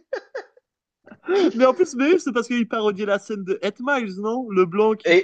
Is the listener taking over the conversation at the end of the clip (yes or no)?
yes